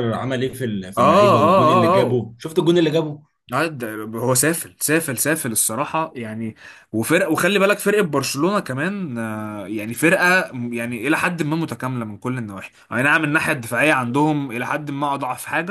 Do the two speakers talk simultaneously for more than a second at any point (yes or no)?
yes